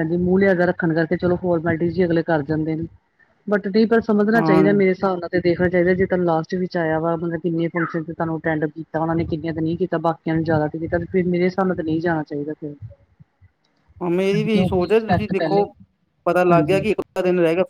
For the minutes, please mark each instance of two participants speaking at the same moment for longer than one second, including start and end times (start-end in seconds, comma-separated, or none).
14.3-15.6